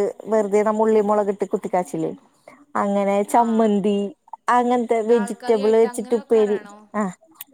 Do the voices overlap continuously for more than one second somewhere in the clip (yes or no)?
yes